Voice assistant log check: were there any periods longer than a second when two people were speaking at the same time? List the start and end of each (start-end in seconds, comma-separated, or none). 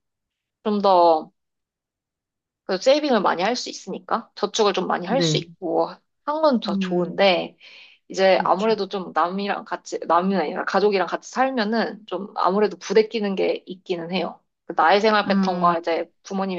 none